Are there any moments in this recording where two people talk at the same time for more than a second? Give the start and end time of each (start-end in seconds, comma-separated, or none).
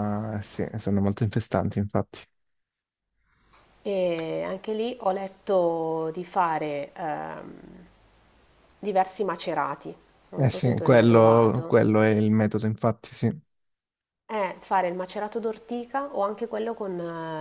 10.4-11.9